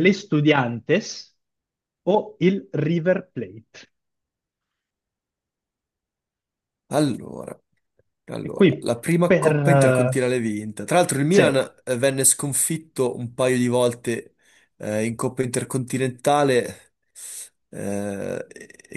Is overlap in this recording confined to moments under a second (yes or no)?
no